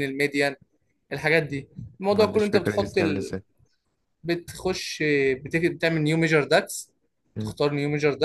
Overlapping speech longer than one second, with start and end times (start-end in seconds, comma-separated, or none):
2.1-3.3